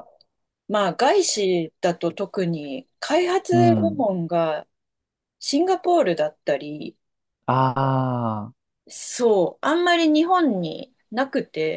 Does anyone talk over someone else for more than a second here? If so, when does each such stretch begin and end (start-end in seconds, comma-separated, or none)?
none